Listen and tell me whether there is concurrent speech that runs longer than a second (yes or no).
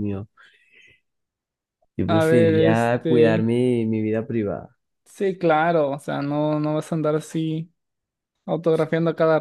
yes